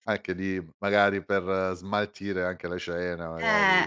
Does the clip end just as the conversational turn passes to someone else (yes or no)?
yes